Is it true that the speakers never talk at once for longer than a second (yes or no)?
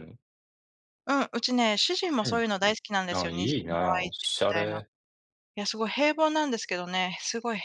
no